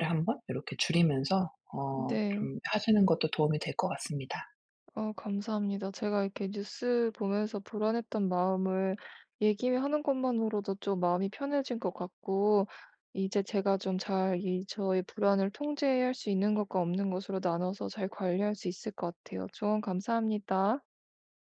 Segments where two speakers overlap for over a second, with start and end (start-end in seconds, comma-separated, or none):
none